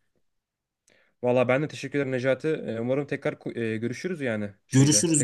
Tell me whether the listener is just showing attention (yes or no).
no